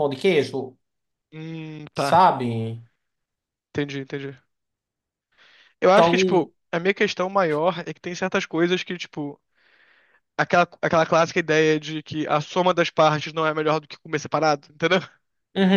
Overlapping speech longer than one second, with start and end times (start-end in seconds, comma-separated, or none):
none